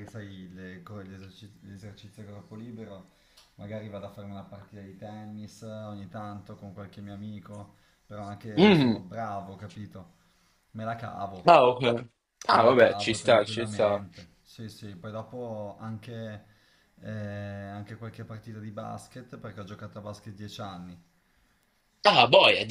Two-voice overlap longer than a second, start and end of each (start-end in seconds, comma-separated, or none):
12.5-14.1